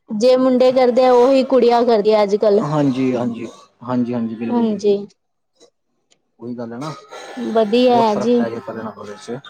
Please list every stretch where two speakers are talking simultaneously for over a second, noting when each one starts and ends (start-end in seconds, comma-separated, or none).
none